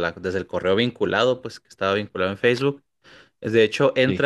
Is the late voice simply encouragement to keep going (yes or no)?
yes